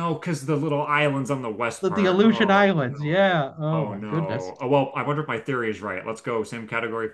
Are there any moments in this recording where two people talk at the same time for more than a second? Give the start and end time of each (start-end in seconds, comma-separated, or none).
1.8-4.5